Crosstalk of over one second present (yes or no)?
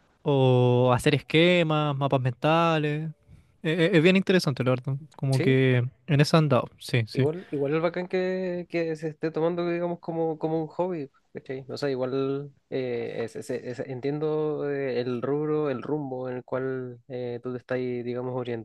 no